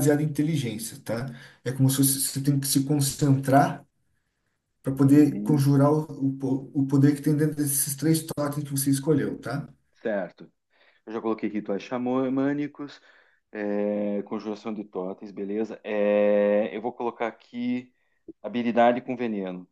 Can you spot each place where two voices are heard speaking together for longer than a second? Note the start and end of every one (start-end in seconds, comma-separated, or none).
none